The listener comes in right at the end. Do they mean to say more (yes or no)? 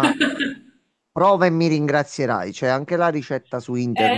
yes